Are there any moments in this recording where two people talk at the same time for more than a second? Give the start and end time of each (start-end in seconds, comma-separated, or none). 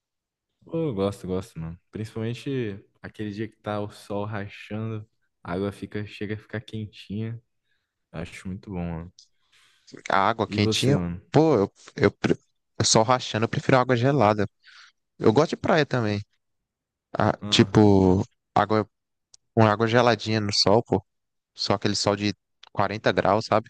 none